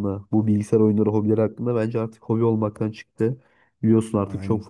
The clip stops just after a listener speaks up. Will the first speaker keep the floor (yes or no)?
yes